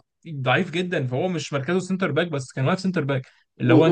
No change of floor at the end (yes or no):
no